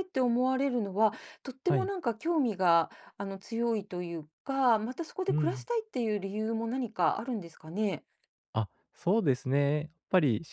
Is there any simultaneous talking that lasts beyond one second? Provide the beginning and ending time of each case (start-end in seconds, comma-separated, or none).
none